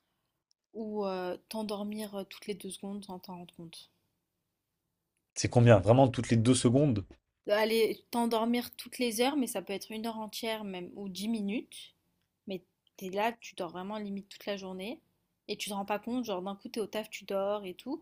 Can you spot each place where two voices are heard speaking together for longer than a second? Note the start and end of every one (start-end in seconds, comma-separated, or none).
none